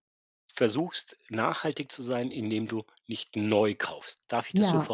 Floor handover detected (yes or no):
yes